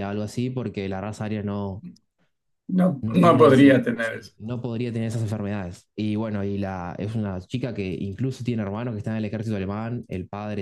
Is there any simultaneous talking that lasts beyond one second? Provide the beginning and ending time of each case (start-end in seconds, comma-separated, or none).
3.0-4.3